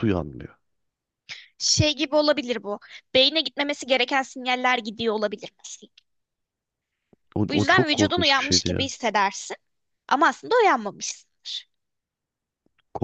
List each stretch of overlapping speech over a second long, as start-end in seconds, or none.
7.5-8.9